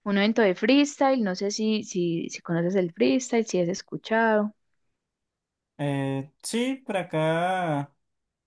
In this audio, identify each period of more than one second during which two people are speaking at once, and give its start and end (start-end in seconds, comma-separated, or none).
none